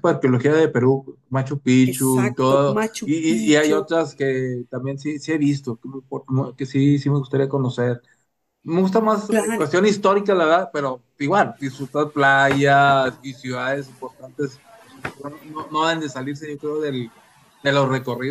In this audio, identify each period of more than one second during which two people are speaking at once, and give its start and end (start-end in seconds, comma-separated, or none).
1.9-3.9